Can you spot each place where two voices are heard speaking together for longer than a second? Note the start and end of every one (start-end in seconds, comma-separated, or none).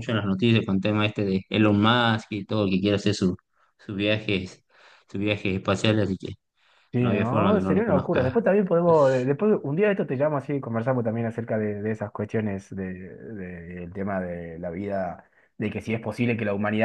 7.0-8.4